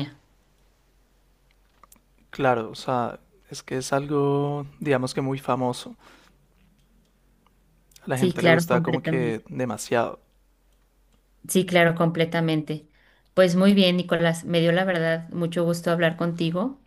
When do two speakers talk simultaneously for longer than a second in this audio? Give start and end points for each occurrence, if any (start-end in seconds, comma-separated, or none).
8.1-9.4